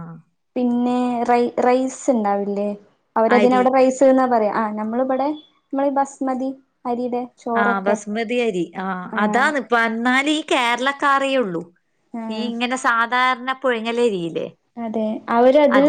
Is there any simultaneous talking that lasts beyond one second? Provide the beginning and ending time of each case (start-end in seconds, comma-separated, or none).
none